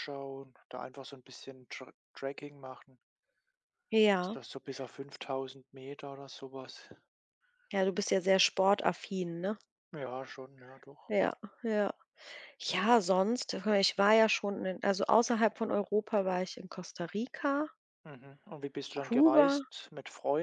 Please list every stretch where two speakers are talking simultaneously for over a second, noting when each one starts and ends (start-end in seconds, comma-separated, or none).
none